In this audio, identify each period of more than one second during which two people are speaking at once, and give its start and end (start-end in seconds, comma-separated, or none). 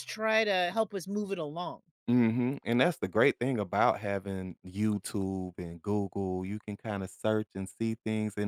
none